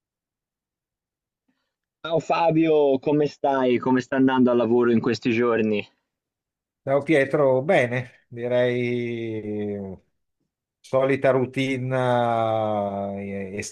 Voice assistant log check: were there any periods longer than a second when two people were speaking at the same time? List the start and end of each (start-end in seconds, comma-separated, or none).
none